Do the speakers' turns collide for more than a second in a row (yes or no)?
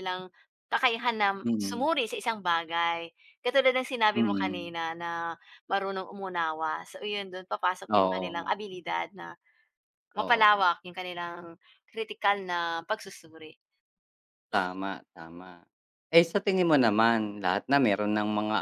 no